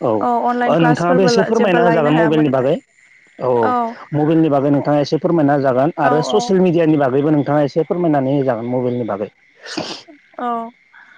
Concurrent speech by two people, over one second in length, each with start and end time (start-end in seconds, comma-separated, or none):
0.7-2.5